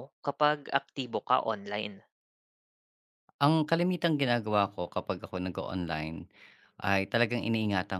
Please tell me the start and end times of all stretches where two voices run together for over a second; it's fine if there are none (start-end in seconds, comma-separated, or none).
none